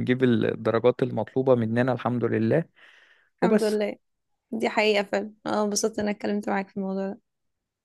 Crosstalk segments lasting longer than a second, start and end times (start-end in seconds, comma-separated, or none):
none